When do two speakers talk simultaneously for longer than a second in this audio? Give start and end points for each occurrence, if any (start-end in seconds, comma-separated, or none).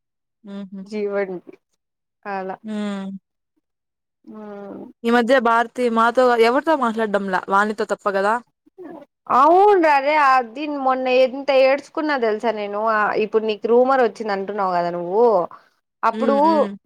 none